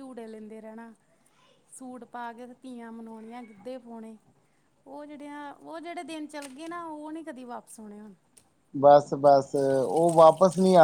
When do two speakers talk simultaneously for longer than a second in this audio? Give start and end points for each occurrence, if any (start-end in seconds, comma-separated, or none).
none